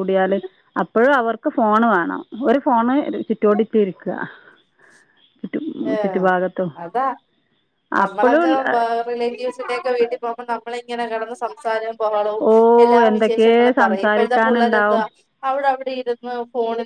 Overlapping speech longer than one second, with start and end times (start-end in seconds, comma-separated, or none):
13.1-14.9